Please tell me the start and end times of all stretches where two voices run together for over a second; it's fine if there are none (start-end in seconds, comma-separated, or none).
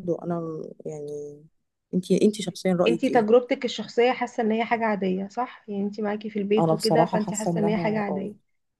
6.6-8.3